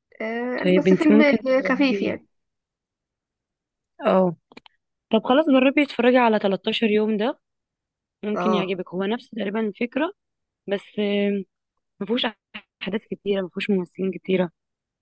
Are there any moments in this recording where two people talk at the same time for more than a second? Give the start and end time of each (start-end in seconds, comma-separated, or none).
0.6-2.2